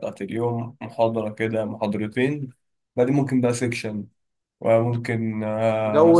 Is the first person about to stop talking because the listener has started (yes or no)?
yes